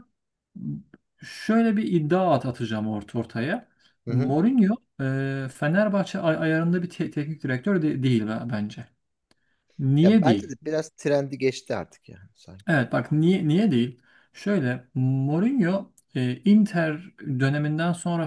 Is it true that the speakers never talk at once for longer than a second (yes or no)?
yes